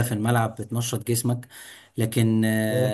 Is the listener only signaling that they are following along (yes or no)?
yes